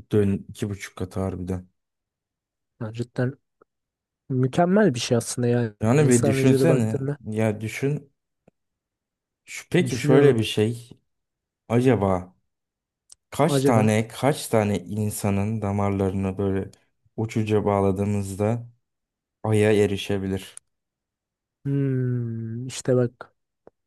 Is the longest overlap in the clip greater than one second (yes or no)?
yes